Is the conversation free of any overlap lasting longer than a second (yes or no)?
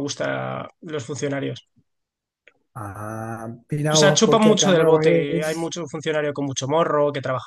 no